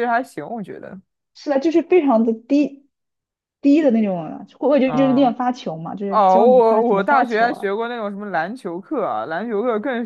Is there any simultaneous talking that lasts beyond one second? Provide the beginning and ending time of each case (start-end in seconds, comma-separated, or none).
6.1-7.7